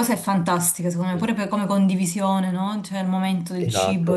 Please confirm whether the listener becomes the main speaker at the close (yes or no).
yes